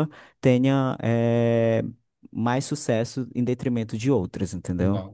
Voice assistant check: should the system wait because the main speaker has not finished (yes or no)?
yes